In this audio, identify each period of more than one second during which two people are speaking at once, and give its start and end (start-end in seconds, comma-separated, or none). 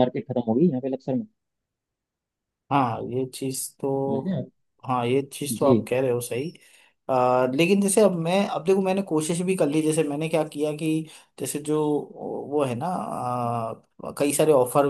none